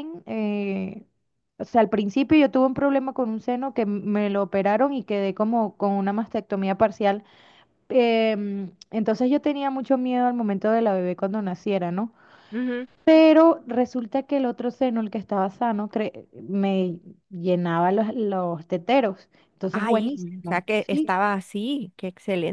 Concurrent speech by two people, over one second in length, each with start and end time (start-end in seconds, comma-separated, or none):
19.7-21.1